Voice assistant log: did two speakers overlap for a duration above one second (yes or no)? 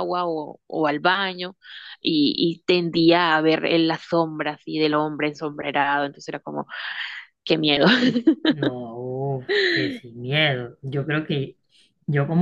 no